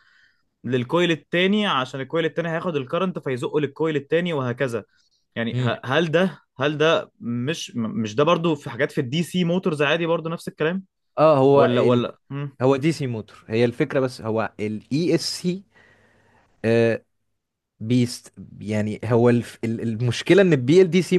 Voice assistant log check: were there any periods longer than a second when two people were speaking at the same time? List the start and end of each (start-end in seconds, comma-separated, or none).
none